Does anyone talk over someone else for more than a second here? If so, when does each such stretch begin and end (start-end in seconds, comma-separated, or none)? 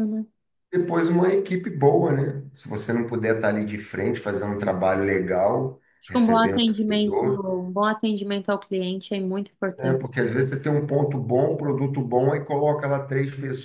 6.0-7.4